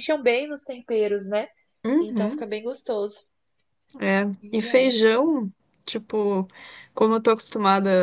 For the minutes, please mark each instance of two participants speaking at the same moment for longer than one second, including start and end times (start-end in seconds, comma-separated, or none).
none